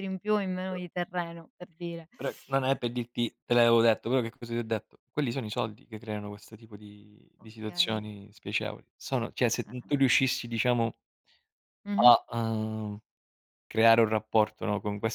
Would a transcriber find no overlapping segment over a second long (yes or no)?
yes